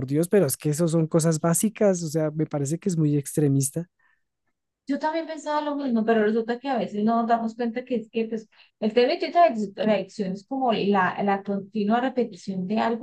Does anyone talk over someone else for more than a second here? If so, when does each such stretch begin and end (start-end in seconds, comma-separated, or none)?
none